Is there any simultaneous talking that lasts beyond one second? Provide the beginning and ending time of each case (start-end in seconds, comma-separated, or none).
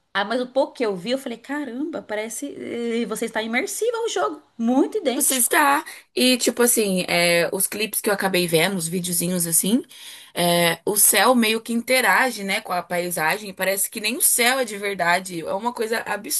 none